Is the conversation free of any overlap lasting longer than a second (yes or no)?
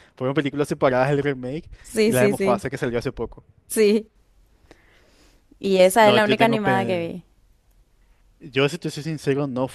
no